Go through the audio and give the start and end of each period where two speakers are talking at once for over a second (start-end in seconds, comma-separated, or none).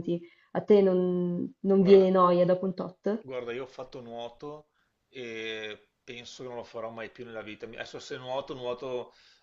none